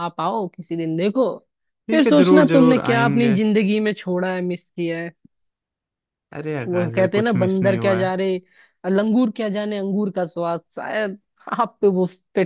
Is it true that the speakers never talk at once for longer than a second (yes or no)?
no